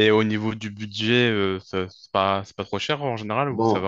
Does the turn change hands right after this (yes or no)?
yes